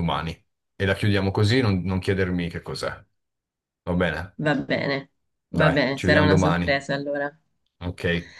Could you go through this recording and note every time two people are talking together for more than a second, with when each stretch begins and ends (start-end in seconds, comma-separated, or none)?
5.5-6.7